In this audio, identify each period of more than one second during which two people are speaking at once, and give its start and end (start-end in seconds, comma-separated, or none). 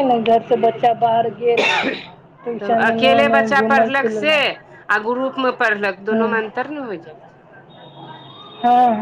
2.6-4.3